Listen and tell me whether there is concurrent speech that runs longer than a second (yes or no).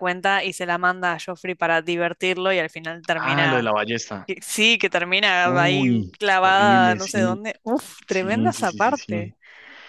yes